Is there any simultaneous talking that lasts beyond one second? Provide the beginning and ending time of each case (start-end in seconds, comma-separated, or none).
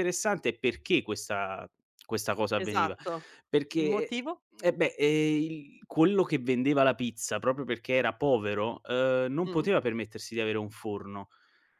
none